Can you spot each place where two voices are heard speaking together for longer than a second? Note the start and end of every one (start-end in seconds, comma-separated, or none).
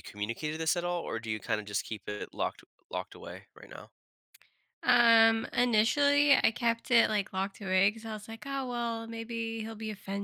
none